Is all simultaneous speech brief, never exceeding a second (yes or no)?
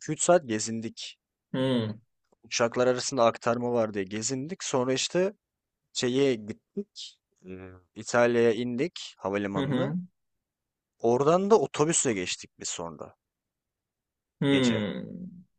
yes